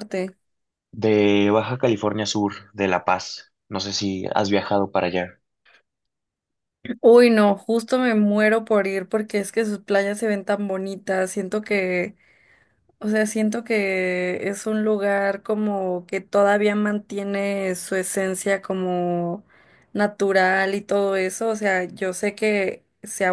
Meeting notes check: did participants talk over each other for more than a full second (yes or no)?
no